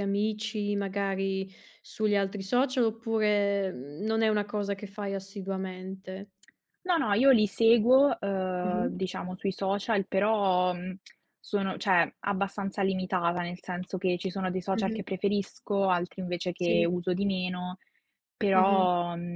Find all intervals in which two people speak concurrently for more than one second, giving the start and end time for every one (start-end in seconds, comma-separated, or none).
none